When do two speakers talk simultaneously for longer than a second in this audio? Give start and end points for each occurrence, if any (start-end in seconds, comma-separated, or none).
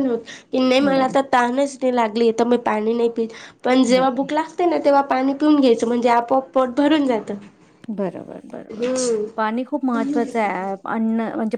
none